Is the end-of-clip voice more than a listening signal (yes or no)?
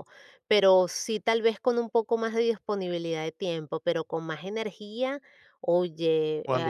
no